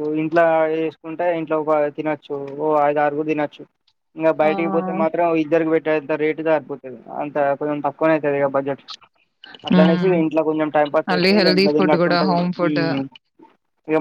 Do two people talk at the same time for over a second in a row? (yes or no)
yes